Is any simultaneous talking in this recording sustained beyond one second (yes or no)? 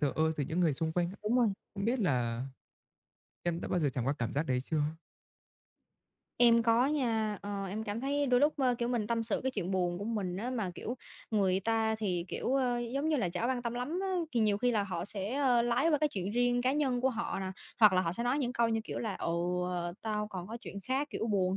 no